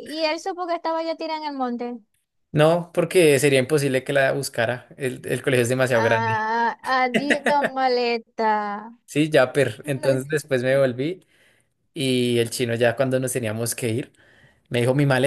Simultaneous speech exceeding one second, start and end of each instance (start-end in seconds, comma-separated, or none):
none